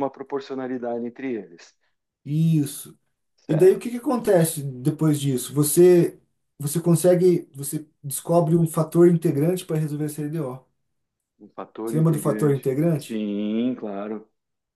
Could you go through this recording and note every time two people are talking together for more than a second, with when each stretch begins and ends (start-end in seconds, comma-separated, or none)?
11.9-13.2